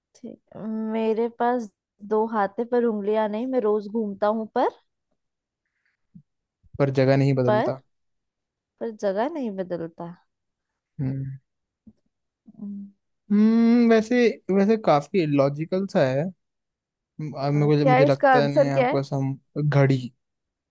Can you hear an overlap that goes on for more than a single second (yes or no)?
yes